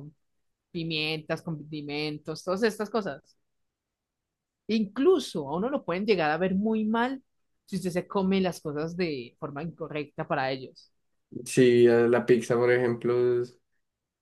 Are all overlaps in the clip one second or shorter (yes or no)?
yes